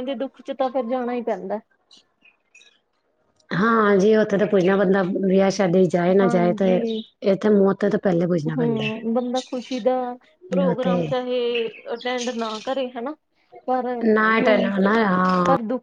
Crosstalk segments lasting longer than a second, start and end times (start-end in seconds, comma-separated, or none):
none